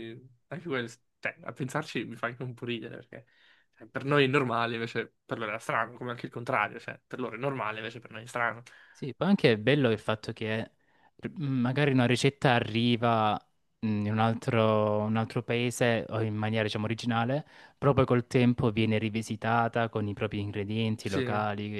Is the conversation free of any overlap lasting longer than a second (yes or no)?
yes